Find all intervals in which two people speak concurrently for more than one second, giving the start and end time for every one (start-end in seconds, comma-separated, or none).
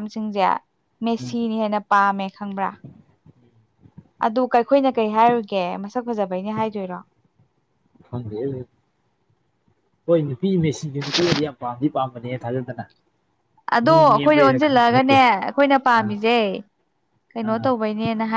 13.8-15.2